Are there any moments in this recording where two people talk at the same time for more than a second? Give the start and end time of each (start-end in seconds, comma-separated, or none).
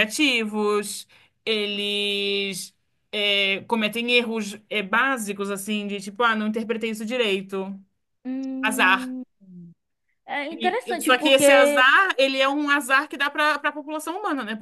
10.5-11.8